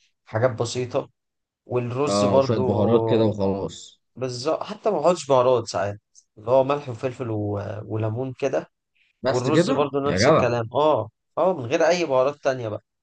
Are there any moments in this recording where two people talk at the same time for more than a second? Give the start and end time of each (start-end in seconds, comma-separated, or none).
9.3-10.5